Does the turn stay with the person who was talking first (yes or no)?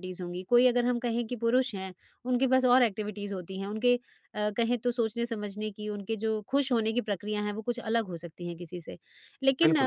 yes